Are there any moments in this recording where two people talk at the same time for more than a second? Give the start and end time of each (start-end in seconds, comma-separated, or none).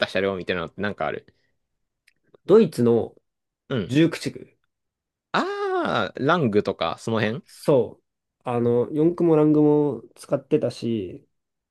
none